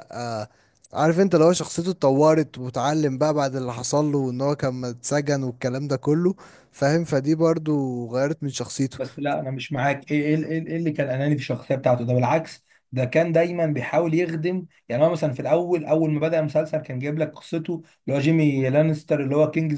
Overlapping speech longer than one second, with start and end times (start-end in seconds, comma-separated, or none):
none